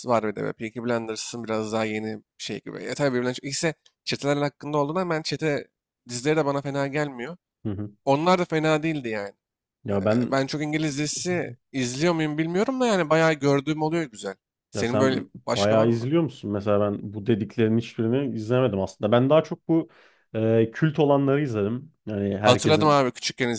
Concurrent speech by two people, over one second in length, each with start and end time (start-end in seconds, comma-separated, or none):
14.7-16.1